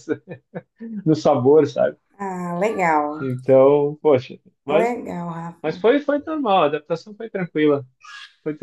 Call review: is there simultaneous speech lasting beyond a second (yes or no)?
no